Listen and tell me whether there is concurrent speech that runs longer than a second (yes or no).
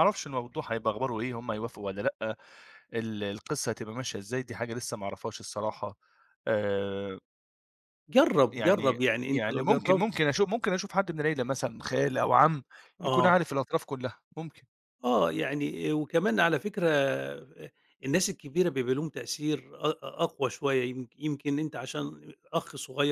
yes